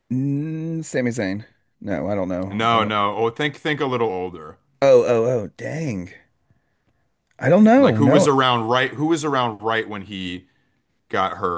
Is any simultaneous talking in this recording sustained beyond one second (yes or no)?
no